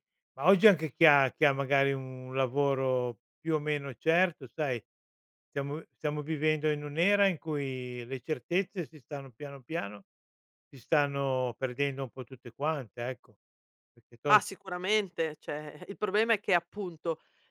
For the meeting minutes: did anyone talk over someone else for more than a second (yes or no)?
no